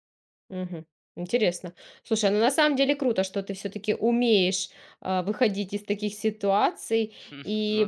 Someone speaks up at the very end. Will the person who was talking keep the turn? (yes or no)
yes